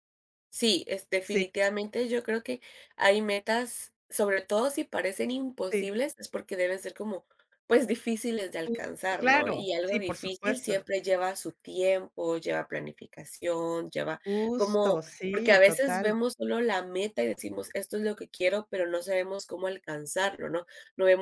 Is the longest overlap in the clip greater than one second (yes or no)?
yes